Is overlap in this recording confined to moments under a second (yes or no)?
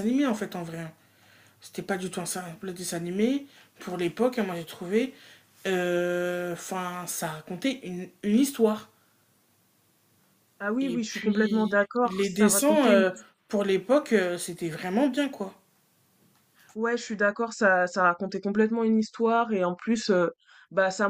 no